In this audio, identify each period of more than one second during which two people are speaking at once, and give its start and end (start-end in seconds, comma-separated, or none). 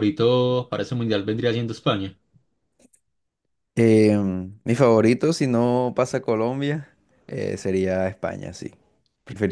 none